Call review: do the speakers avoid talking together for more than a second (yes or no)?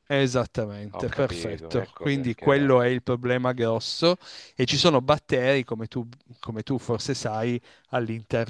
no